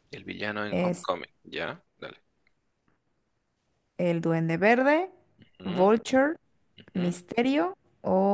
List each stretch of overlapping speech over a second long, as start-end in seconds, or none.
none